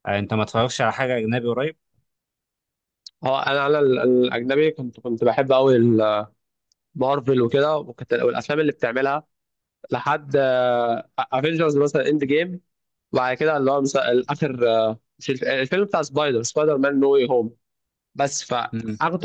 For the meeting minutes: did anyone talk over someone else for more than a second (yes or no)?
no